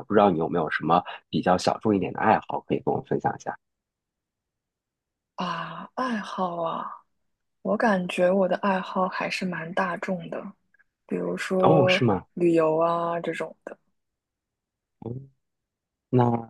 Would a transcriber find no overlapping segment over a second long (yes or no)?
yes